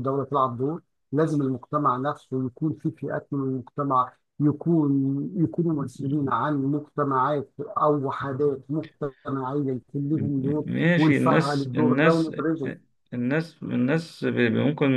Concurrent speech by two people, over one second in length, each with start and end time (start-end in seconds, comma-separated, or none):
10.7-12.3